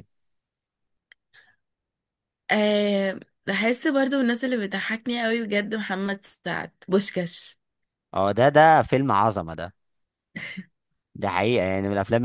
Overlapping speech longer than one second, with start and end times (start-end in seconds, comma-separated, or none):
none